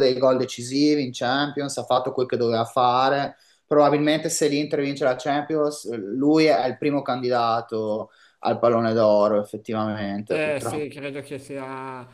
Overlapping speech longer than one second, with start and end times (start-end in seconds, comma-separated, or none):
none